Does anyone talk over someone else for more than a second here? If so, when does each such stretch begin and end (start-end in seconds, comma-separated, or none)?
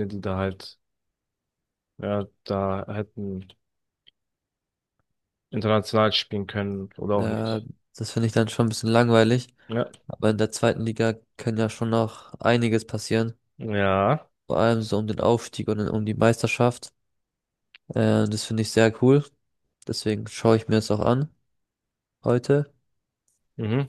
none